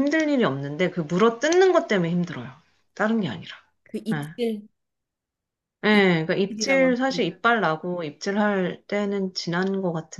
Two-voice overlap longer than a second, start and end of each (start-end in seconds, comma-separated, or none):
5.9-7.2